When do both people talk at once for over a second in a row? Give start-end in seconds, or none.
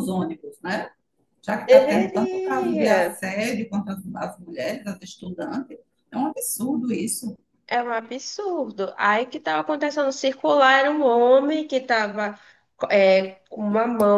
1.7-3.0